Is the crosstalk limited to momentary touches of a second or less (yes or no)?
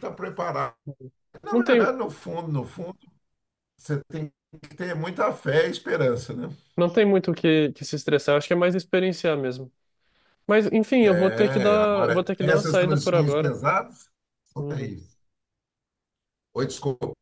no